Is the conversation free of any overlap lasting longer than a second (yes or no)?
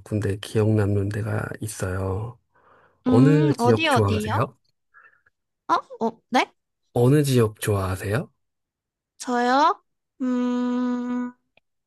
no